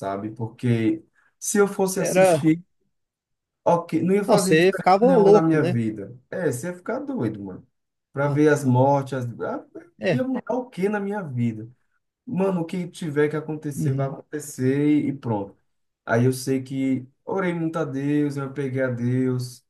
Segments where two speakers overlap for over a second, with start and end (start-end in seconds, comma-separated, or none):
4.2-5.8